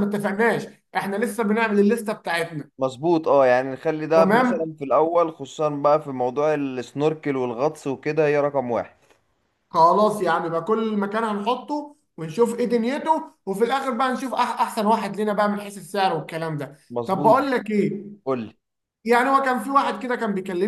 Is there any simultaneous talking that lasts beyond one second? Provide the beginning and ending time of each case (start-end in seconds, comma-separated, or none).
none